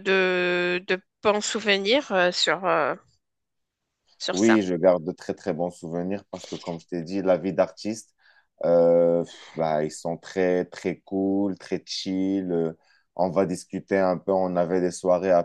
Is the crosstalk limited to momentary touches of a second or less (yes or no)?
yes